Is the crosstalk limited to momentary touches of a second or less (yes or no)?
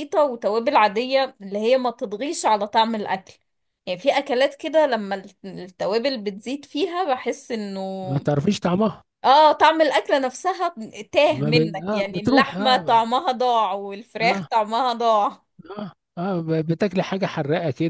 no